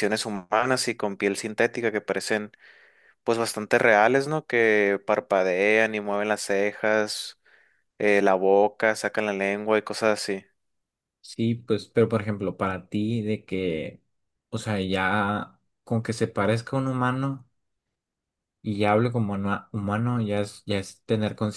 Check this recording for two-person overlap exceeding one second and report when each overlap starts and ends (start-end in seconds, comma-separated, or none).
none